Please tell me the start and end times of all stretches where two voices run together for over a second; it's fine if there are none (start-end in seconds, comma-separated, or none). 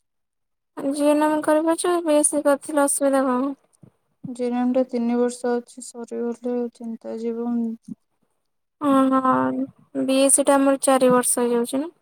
none